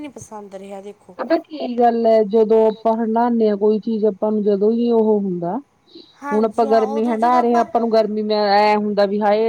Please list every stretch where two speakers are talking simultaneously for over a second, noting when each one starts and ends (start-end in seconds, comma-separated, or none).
6.3-7.7